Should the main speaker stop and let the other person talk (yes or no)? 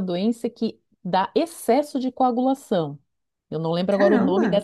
no